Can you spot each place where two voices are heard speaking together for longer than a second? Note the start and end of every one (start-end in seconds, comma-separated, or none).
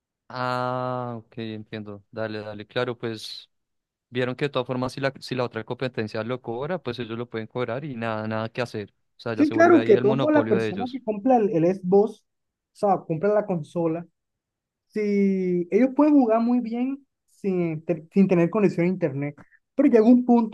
9.3-11.0